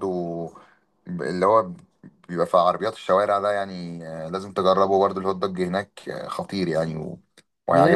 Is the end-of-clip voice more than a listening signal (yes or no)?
yes